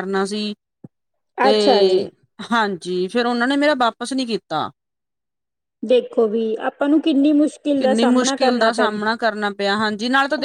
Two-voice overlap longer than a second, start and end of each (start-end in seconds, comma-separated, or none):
7.8-9.2